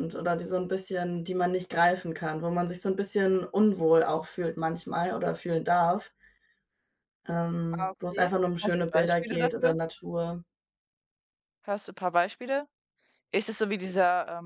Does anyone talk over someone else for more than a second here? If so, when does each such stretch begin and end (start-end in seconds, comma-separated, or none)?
7.7-9.8